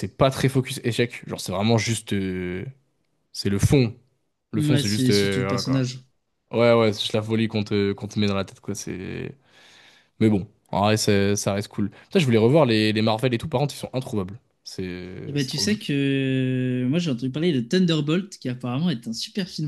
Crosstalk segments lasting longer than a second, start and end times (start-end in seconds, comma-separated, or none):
4.5-5.9